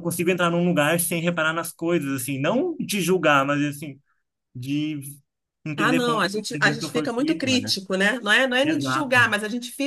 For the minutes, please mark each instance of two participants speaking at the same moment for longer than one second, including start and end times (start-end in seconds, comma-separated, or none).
5.8-7.7